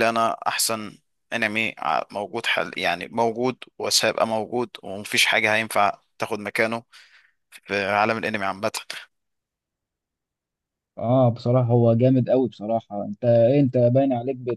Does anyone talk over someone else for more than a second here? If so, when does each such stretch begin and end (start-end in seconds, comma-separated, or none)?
none